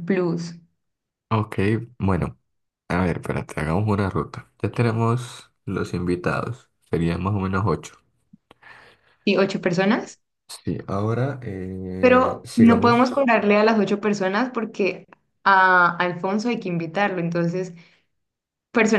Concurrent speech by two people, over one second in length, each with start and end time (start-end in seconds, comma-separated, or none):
12.0-13.2